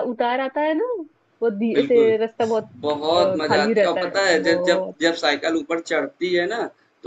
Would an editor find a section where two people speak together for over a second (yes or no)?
yes